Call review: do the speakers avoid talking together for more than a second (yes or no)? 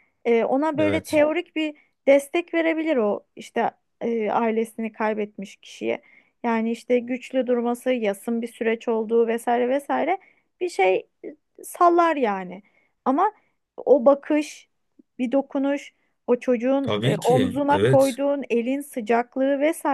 no